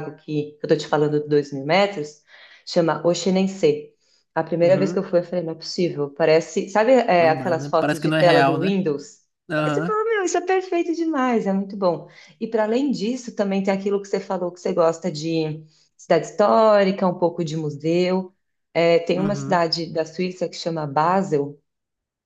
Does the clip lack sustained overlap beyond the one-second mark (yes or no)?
no